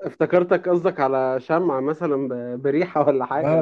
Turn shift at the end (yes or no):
yes